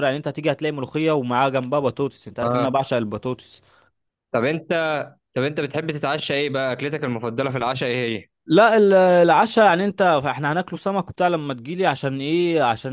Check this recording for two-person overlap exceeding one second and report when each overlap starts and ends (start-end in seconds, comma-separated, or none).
none